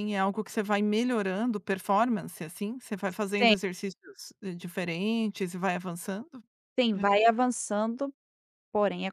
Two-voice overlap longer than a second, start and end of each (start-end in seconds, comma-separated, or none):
none